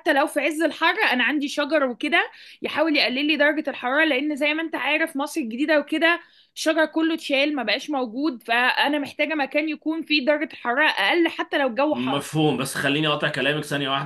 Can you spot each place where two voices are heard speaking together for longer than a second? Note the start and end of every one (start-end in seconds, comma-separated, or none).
none